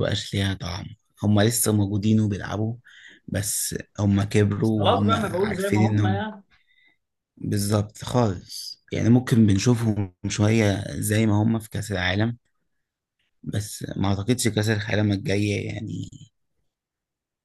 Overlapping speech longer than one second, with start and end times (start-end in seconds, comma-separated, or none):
4.6-6.2